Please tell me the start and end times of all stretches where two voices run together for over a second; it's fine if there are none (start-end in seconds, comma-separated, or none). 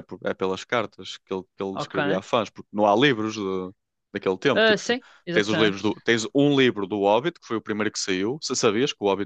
4.5-5.9